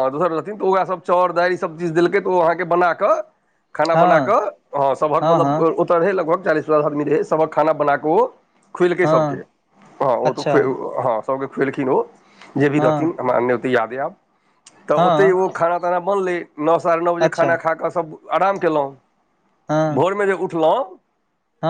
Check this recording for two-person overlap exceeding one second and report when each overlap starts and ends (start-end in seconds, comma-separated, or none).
none